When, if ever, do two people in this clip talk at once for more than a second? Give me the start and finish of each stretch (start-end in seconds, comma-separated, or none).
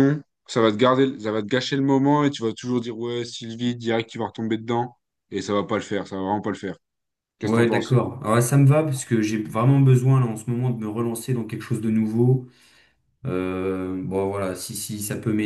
none